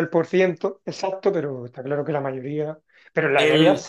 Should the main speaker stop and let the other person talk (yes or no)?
no